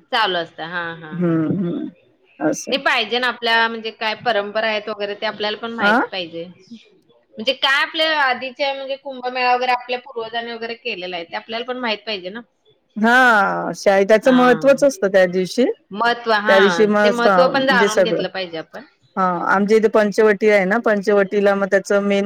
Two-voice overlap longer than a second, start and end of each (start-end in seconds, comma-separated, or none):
16.5-18.2